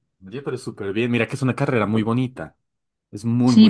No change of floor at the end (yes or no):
no